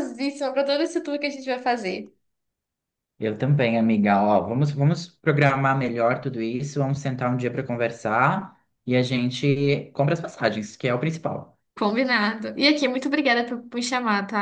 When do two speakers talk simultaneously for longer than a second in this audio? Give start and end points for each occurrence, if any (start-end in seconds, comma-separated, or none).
none